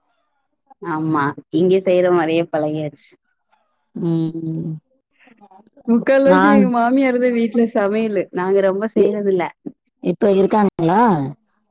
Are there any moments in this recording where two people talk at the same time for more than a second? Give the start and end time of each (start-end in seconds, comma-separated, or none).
none